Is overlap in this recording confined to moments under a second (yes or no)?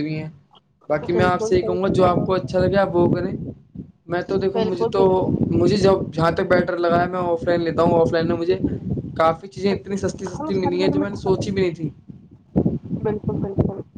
no